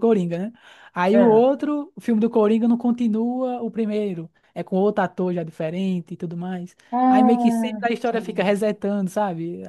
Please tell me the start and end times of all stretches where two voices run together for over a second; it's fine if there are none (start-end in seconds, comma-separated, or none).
7.0-8.6